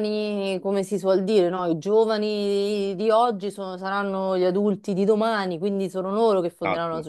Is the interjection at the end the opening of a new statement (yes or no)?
no